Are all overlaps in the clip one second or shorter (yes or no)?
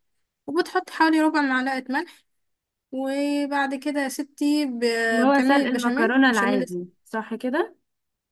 no